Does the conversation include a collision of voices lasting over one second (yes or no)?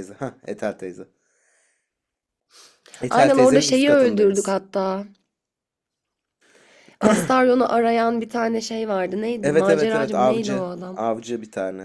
yes